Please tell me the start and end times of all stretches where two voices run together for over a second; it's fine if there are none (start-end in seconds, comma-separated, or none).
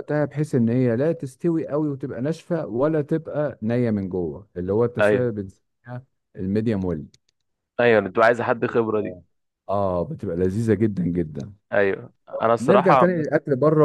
none